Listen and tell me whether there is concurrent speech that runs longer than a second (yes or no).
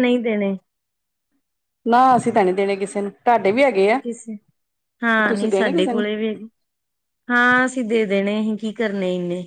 no